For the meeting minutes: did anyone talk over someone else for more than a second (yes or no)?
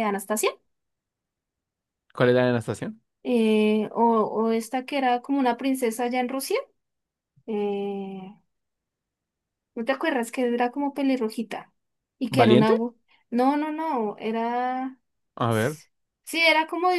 no